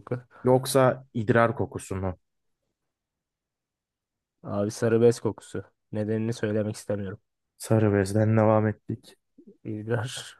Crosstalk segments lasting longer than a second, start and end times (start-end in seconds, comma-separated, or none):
none